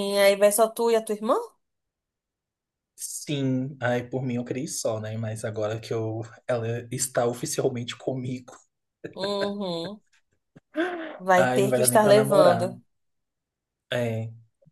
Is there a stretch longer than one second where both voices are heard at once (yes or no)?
yes